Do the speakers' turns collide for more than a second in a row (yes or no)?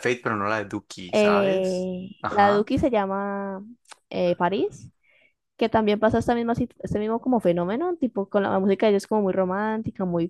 yes